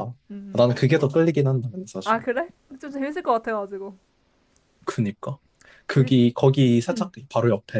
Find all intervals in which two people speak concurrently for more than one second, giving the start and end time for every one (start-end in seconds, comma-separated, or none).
none